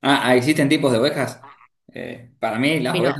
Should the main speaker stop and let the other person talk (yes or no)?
yes